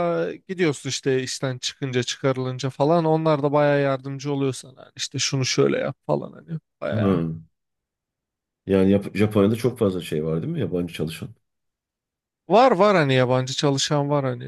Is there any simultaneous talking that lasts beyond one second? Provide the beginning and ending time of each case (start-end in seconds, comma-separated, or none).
none